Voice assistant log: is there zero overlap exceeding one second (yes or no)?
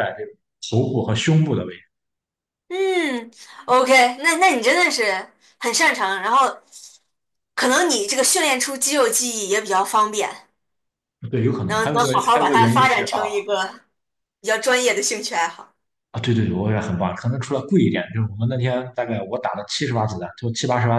no